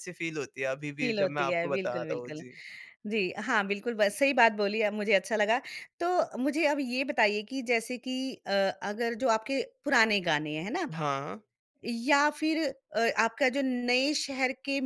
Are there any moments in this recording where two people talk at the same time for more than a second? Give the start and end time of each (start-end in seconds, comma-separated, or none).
1.0-2.4